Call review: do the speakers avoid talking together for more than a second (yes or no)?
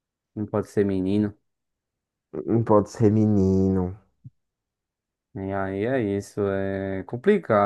yes